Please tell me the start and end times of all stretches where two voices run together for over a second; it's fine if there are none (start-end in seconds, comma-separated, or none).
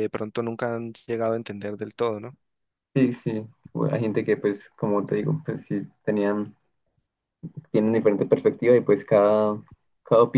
none